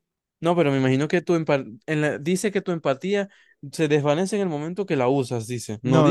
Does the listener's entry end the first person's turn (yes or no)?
yes